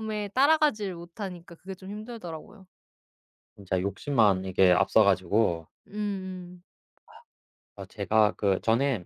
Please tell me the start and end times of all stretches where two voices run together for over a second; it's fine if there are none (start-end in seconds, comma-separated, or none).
none